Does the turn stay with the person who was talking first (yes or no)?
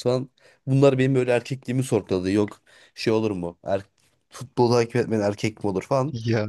yes